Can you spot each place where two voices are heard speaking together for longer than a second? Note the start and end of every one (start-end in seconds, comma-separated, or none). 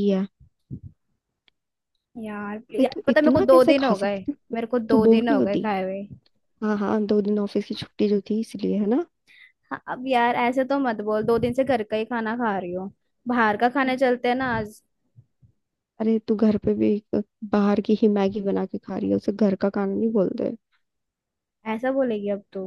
2.8-5.7